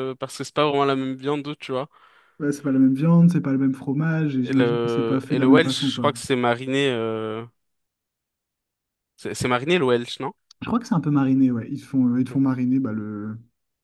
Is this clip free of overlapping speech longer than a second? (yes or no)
no